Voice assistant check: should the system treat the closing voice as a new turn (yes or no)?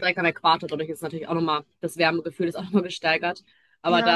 no